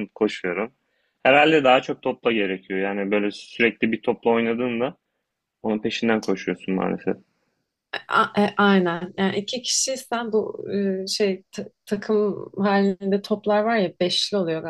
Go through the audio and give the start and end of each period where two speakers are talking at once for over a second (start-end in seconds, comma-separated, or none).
none